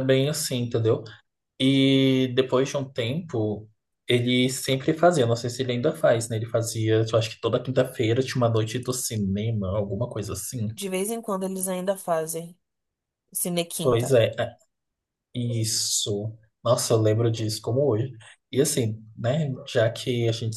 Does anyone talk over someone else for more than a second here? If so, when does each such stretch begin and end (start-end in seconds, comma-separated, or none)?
none